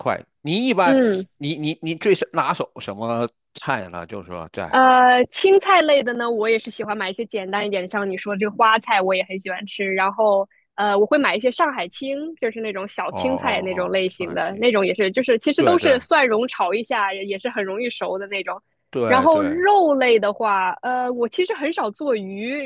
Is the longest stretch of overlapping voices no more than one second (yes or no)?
no